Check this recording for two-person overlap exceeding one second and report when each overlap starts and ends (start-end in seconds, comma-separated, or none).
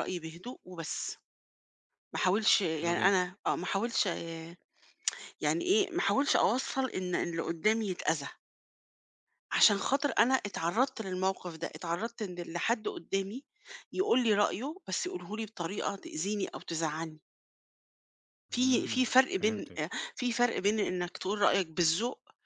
18.5-19.8